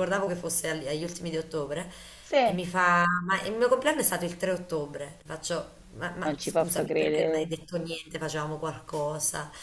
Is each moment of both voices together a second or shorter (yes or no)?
no